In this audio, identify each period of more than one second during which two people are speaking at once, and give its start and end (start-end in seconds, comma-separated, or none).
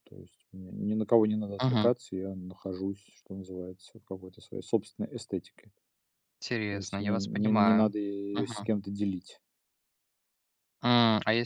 6.7-7.9